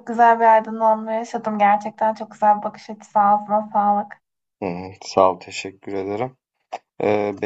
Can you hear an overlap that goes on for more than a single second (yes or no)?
no